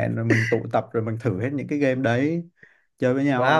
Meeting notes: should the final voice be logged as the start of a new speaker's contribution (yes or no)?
yes